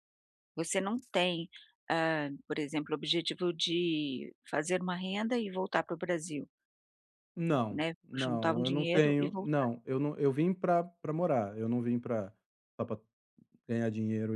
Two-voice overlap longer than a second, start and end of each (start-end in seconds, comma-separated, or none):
7.7-9.7